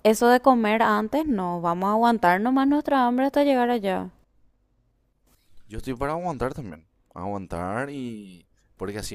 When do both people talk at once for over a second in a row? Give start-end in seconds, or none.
none